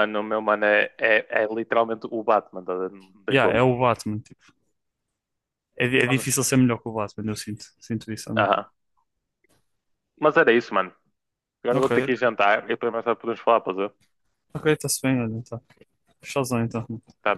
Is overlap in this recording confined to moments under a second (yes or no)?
yes